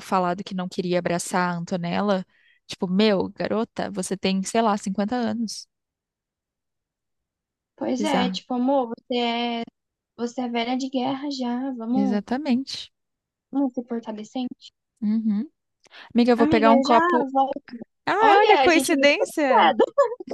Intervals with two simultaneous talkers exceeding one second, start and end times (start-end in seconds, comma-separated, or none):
18.2-19.7